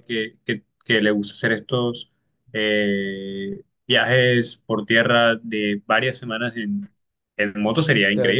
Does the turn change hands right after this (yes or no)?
yes